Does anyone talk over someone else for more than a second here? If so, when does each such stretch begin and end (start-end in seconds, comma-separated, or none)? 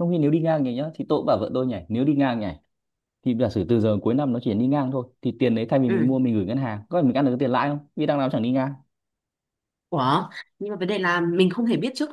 none